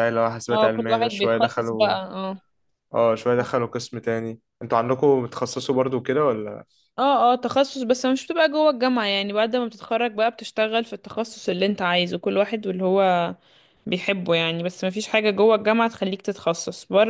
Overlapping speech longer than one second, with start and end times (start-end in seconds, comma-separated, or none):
0.5-2.0